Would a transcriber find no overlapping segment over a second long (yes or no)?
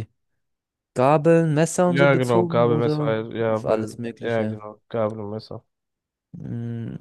no